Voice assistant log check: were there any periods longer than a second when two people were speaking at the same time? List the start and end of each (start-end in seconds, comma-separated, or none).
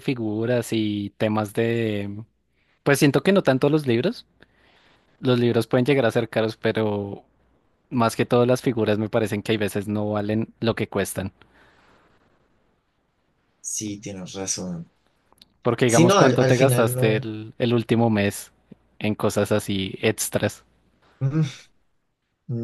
15.8-17.3